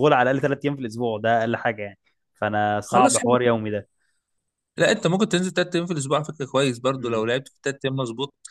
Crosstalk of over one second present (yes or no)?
no